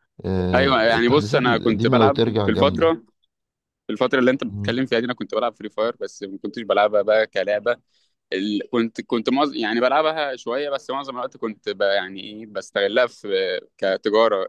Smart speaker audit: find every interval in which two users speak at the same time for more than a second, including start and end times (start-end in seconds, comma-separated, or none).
0.5-2.9